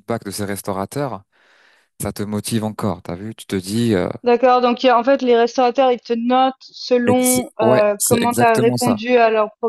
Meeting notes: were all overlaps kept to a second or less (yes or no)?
no